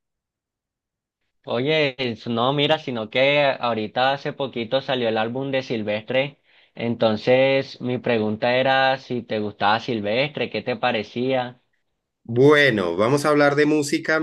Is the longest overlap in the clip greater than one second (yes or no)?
no